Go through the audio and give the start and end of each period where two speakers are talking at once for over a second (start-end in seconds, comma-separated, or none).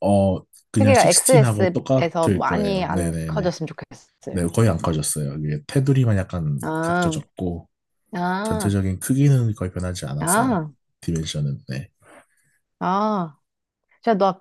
0.8-3.5